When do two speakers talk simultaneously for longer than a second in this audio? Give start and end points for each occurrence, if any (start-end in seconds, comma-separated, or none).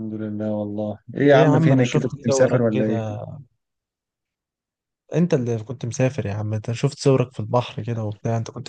1.3-3.1